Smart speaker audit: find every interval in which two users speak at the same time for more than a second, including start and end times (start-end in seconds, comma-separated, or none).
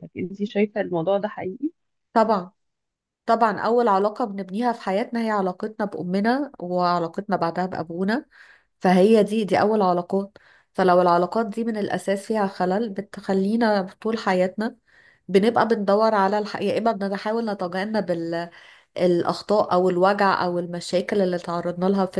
none